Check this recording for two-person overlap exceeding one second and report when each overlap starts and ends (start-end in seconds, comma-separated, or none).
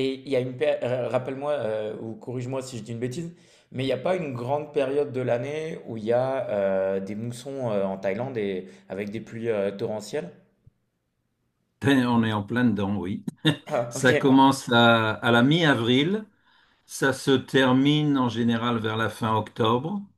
none